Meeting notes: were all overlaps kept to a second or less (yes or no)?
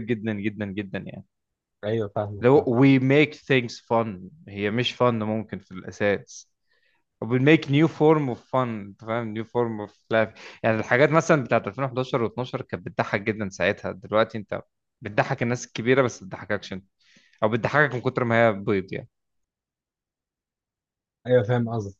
yes